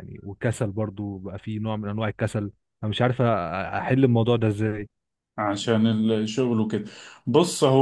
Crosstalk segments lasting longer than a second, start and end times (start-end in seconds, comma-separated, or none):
none